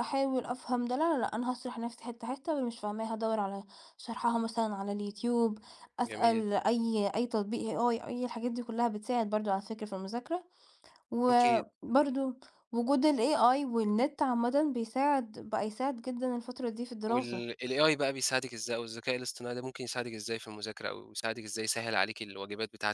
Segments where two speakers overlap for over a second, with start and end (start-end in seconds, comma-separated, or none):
none